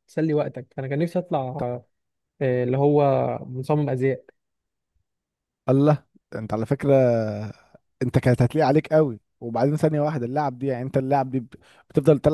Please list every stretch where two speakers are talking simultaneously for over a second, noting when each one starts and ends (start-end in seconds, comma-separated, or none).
none